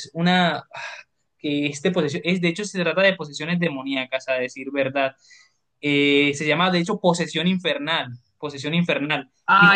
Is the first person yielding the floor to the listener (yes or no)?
yes